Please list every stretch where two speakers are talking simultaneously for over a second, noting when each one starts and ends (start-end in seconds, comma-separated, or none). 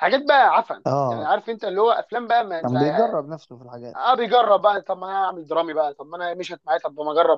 none